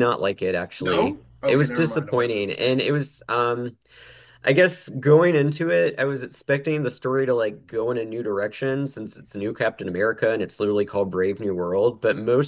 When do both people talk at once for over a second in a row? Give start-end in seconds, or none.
0.8-2.8